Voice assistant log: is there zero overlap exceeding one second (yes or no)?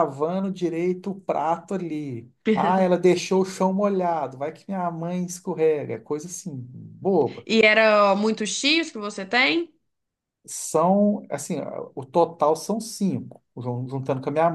yes